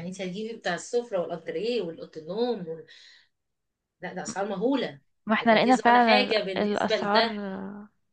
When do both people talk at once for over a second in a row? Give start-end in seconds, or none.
5.4-7.4